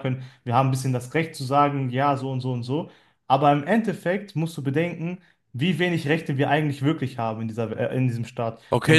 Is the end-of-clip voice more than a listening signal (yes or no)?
yes